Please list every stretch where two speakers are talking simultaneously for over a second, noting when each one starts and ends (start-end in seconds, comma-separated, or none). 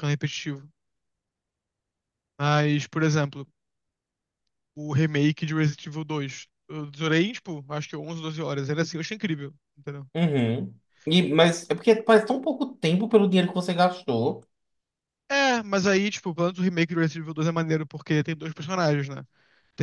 none